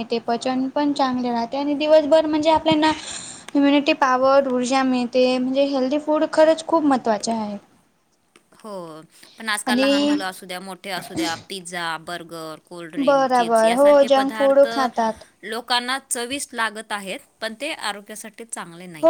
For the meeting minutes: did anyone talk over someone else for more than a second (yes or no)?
yes